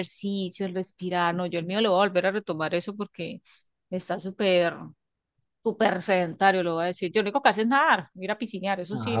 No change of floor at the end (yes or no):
no